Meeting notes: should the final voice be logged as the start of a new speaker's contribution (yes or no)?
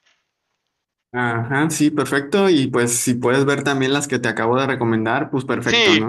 yes